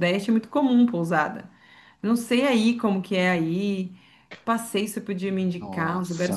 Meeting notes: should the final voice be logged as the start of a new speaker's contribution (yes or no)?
no